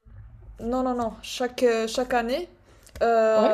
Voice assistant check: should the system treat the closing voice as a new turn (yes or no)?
no